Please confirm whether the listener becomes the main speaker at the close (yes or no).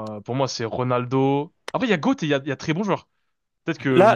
yes